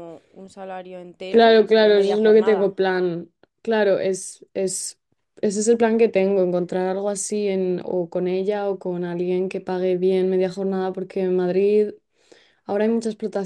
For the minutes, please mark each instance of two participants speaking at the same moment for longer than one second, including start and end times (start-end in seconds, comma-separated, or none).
1.3-2.8